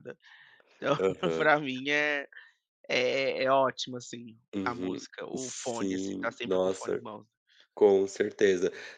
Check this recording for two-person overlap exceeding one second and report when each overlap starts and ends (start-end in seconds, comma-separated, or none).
4.5-7.0